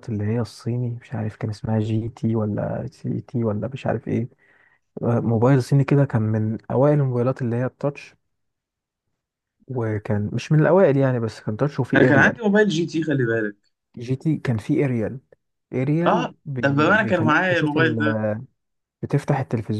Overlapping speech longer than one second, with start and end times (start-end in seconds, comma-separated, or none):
16.1-17.8